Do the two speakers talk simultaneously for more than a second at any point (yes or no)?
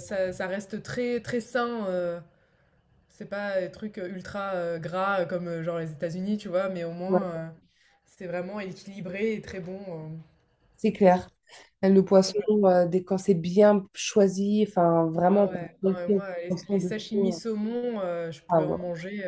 yes